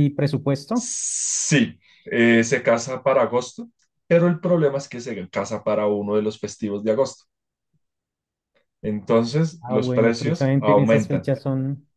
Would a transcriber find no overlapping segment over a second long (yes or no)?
no